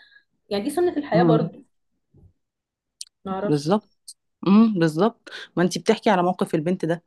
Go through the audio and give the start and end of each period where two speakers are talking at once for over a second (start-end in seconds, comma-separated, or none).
none